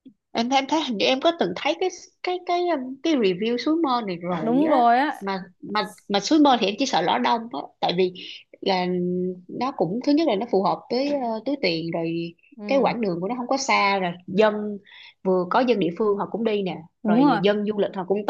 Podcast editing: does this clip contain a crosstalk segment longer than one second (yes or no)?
no